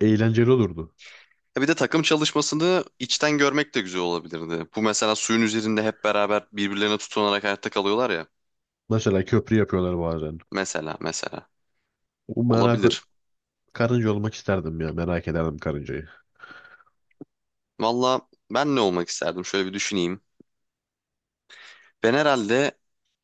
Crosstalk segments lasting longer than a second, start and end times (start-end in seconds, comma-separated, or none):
none